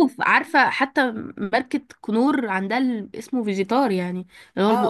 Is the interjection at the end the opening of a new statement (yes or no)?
yes